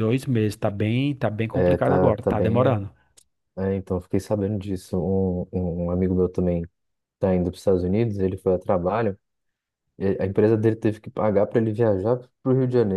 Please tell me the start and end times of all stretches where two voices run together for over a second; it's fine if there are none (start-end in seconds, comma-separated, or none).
1.5-2.8